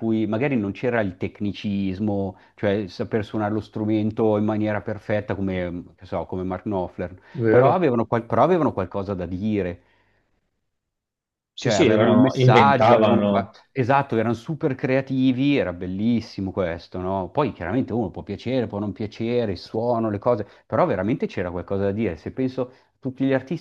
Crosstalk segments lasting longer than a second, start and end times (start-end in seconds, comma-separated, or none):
11.6-13.5